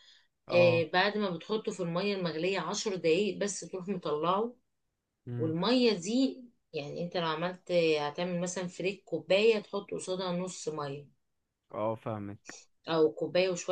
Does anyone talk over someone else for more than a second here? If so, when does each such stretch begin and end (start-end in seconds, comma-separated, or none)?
none